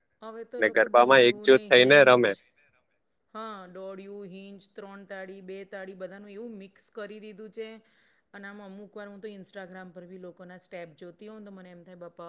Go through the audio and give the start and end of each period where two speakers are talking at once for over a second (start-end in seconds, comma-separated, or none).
0.6-2.3